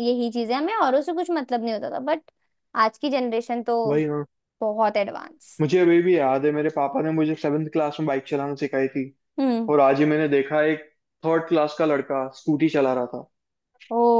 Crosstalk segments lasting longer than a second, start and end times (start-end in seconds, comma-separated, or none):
none